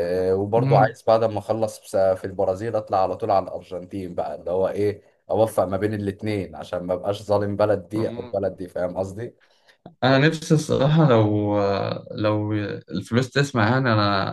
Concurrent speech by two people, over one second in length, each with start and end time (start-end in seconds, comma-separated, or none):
none